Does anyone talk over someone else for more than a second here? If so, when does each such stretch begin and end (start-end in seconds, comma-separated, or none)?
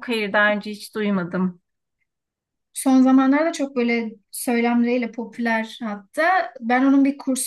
none